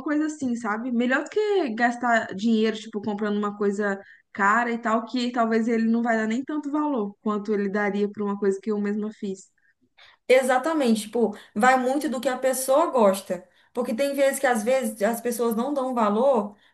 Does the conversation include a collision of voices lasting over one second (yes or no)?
no